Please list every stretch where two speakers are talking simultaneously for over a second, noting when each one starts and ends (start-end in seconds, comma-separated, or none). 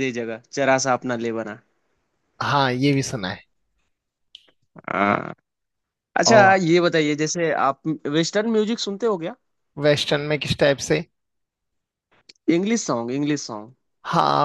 none